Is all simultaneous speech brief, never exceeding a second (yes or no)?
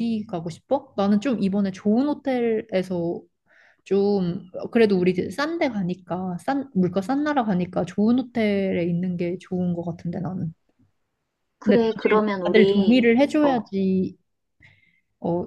no